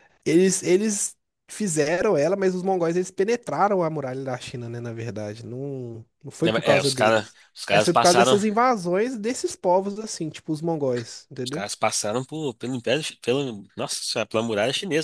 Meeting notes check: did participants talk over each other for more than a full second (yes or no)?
yes